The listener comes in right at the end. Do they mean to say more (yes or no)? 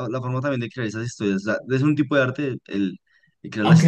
yes